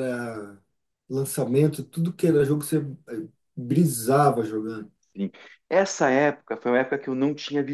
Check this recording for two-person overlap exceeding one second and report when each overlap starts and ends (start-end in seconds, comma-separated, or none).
none